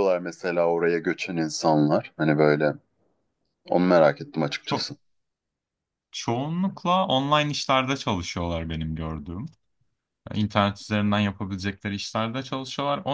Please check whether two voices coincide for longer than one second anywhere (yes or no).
no